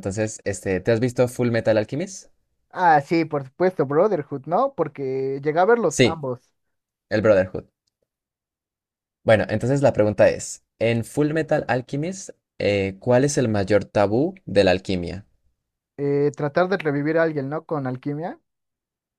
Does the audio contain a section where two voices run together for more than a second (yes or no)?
no